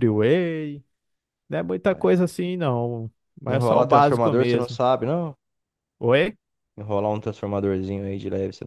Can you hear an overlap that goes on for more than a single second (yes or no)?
yes